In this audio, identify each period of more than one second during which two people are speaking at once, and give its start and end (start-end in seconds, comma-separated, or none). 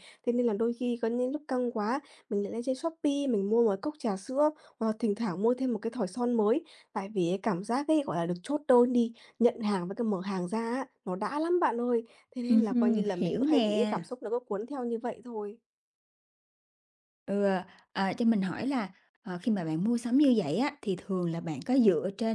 12.5-14.0